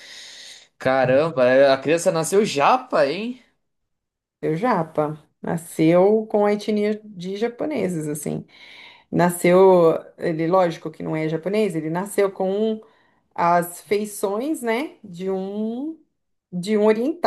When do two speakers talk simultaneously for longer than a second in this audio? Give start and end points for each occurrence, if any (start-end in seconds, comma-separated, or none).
none